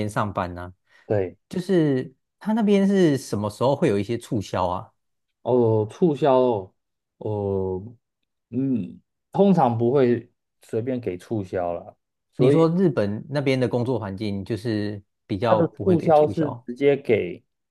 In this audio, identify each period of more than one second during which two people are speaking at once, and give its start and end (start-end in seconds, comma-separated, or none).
15.4-16.7